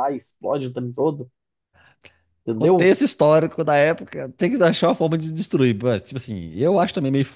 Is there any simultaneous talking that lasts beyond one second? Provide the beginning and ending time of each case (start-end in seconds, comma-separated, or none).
none